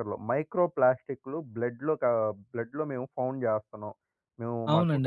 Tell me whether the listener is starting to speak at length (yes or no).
yes